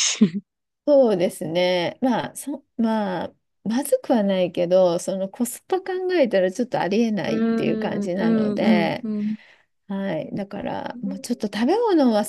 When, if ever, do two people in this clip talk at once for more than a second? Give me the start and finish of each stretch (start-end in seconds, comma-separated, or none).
7.5-9.1